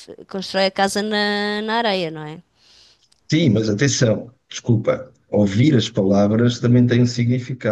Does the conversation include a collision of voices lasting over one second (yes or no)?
no